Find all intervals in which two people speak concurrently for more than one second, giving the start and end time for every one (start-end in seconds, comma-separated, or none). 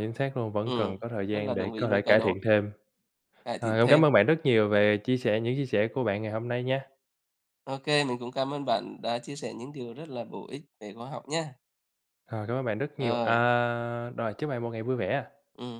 0.6-2.4